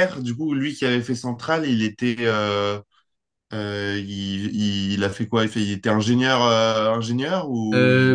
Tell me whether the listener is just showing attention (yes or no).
no